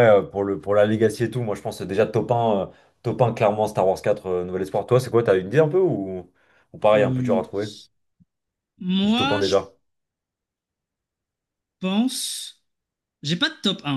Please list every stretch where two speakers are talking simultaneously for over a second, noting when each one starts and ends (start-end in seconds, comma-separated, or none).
none